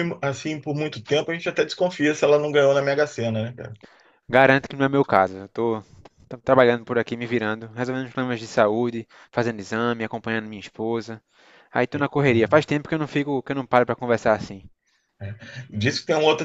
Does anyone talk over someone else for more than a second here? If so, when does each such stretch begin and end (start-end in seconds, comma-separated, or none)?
none